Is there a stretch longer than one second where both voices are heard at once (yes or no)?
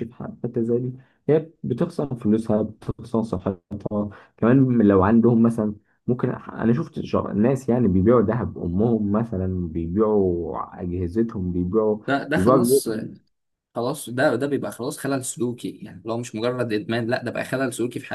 no